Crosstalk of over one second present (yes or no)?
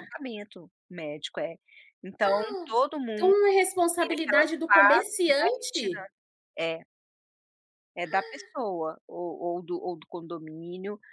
yes